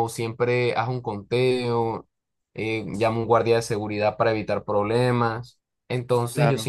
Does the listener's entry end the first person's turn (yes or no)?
no